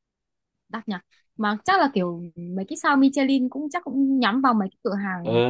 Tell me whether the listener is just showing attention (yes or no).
no